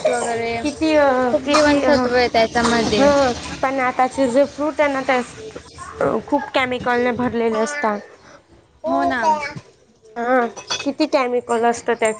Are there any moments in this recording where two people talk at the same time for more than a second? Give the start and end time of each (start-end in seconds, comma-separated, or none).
none